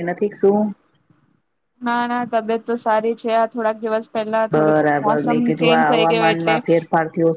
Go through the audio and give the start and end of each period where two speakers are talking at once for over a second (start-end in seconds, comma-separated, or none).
4.5-6.5